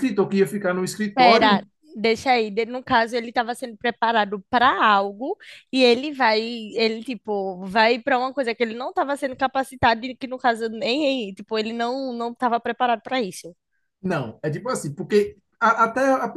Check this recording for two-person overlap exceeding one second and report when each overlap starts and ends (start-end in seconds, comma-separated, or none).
none